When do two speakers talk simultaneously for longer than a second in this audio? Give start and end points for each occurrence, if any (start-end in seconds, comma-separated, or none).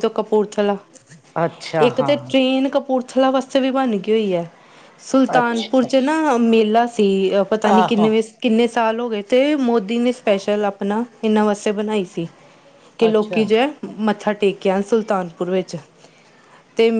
none